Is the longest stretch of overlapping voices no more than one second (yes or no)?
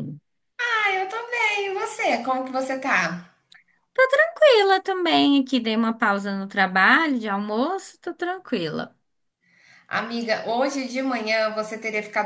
yes